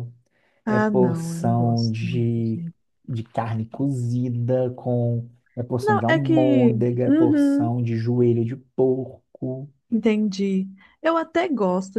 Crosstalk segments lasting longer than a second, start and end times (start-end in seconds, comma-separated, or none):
0.7-2.6, 5.8-7.7